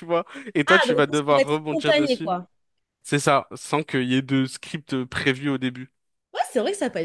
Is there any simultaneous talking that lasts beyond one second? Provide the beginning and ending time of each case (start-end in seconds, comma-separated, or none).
0.7-2.3